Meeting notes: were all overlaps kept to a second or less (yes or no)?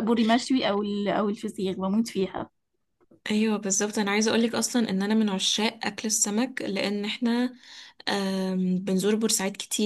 yes